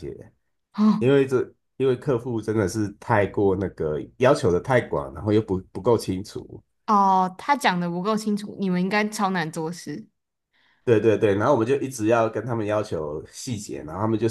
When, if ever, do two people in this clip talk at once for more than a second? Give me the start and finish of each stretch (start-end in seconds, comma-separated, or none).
none